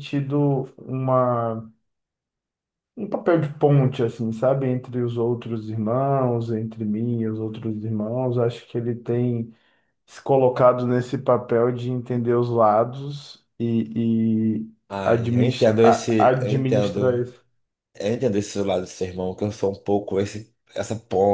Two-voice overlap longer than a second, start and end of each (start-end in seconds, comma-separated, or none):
14.9-17.2